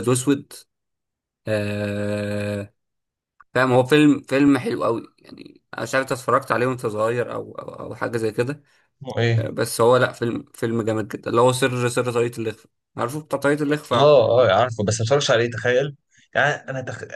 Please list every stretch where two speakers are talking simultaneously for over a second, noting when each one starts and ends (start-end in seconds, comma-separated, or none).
none